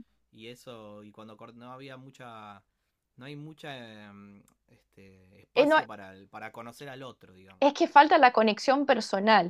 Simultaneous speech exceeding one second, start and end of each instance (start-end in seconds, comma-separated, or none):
none